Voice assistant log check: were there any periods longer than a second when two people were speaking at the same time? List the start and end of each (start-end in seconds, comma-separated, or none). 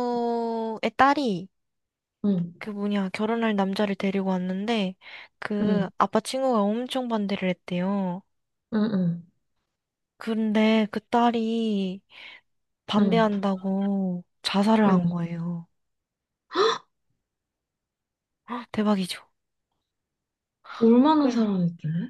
none